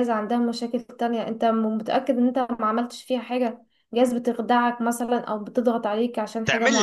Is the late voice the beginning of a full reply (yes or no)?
yes